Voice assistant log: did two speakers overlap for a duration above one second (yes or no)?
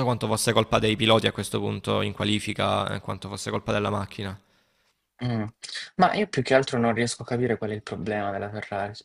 no